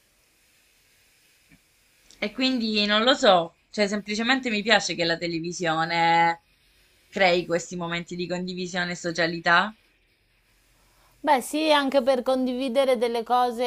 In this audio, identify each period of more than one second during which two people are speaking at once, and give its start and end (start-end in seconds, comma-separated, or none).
none